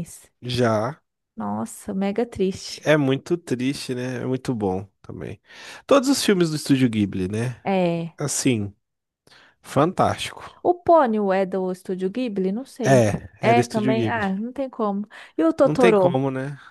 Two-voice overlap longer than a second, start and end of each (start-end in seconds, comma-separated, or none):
12.8-14.3